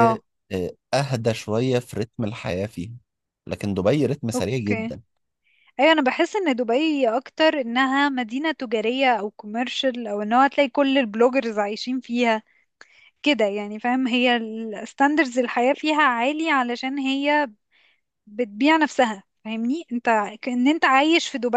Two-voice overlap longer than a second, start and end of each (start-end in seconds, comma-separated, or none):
none